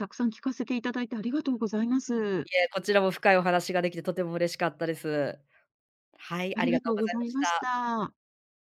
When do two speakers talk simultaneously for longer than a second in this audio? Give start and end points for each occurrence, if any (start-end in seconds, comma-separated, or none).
6.5-7.8